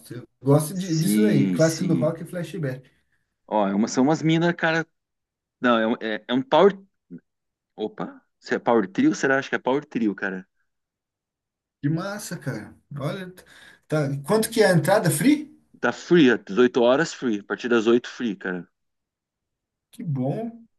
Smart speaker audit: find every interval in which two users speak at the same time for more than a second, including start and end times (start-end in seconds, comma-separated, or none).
0.7-2.1